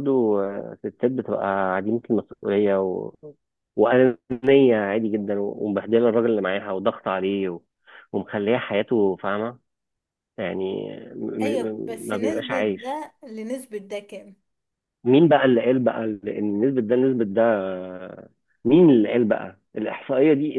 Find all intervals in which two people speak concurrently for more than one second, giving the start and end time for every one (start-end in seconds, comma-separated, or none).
11.4-13.0